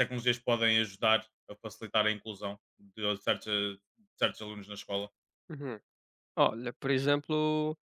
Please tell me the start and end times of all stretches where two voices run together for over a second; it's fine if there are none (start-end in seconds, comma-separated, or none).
none